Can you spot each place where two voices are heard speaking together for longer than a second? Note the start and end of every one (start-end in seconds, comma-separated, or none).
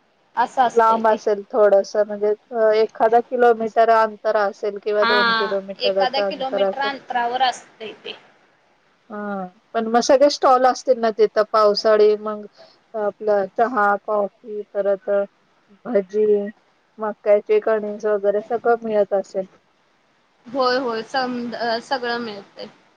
5.0-6.8